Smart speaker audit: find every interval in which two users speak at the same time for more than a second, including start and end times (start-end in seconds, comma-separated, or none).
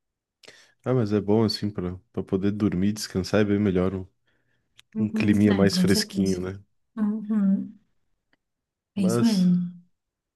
5.0-6.4